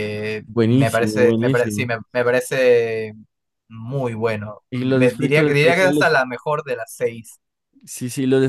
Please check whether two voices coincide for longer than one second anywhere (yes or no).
yes